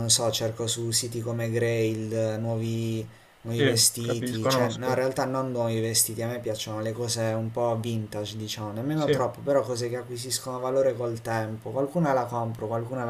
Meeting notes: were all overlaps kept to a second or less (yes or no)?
no